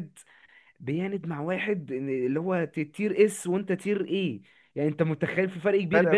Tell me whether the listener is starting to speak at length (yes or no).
yes